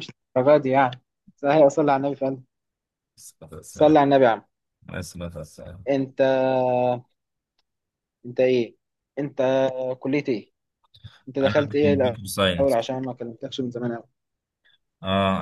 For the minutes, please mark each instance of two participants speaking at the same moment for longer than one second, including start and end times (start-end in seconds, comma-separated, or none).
11.4-12.8